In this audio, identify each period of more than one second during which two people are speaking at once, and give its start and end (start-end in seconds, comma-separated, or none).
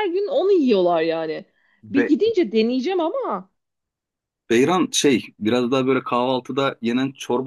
none